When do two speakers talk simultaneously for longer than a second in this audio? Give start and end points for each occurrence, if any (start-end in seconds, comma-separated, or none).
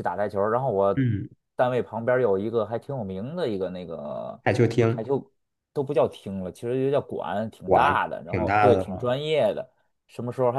7.7-9.1